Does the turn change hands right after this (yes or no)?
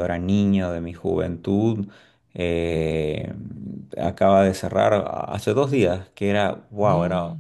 no